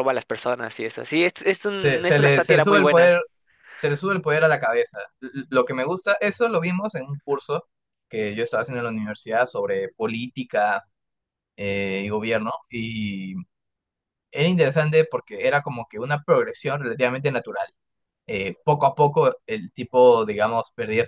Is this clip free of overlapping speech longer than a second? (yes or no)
no